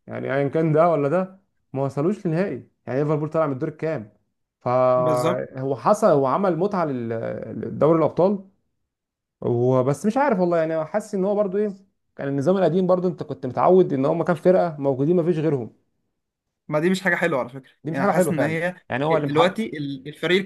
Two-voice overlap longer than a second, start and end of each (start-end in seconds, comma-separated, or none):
17.8-19.6